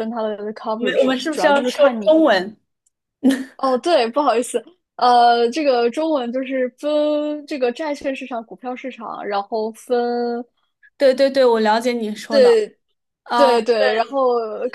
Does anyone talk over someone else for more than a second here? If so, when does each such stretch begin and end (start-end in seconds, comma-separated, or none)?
0.8-2.2